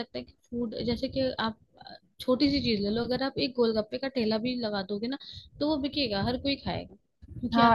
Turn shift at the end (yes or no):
yes